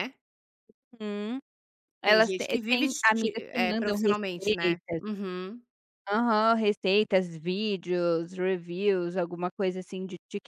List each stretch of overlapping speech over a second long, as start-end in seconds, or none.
2.0-5.0